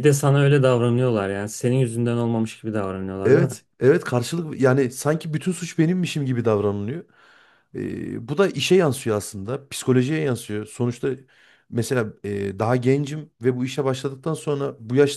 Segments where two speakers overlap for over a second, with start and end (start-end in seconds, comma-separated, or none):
none